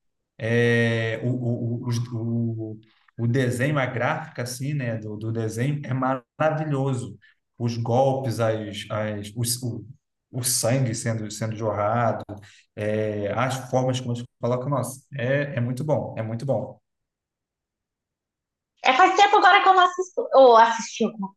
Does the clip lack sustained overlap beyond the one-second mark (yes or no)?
yes